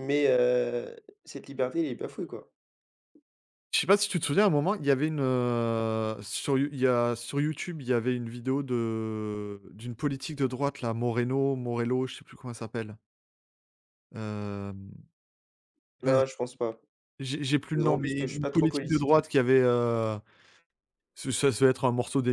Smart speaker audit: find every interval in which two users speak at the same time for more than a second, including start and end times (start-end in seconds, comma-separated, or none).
17.8-19.2